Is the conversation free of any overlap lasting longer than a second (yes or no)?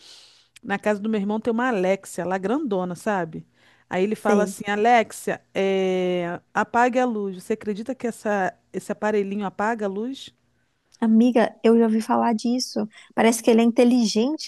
yes